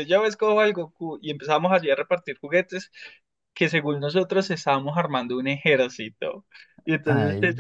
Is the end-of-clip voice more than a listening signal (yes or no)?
no